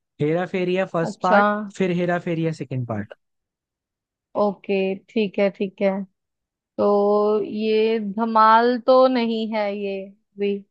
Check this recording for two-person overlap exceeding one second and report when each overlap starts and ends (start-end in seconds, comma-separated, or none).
none